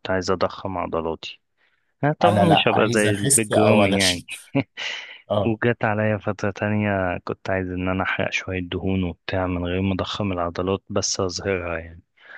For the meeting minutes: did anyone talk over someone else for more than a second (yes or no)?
yes